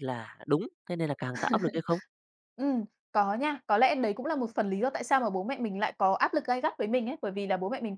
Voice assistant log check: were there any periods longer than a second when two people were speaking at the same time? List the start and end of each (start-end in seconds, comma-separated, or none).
none